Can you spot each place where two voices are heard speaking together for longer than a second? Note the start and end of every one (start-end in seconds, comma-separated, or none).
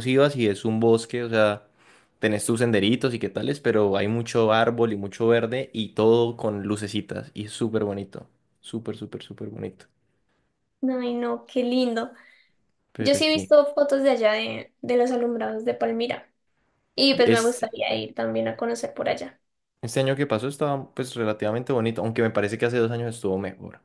none